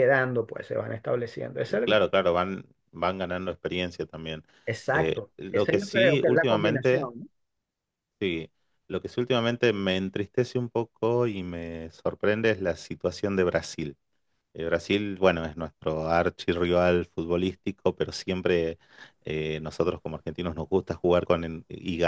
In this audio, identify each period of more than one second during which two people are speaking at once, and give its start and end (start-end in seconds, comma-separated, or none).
4.9-7.1